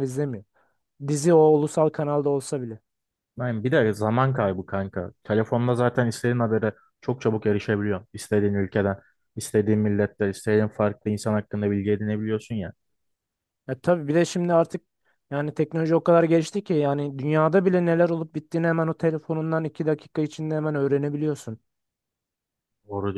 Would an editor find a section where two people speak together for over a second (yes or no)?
no